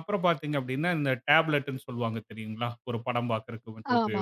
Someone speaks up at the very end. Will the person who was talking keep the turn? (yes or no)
yes